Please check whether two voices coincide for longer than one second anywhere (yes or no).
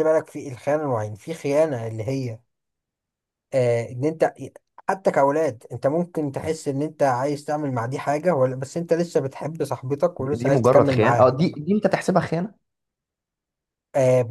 yes